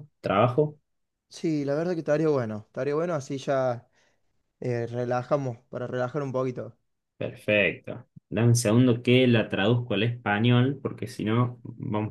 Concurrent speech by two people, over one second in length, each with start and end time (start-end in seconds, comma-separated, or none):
none